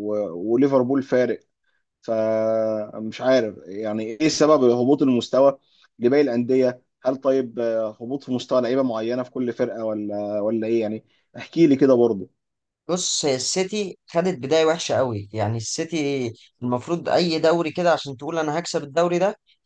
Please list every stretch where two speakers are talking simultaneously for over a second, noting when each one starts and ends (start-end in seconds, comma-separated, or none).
none